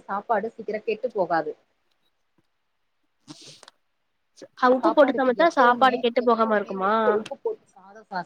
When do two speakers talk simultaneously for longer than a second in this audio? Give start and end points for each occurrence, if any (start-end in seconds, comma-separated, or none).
4.8-6.9